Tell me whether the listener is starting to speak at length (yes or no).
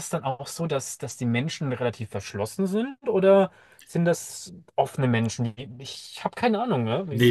yes